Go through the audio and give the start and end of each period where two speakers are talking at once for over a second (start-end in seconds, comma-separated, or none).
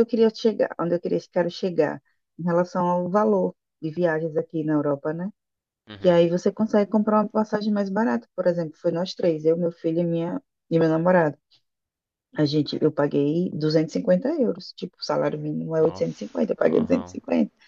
15.8-17.2